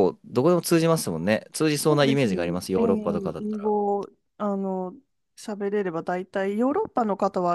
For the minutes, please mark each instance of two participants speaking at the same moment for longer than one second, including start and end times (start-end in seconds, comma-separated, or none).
1.9-3.7